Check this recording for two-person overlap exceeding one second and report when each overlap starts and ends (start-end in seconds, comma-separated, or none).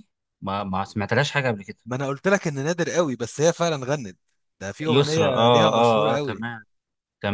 4.9-6.5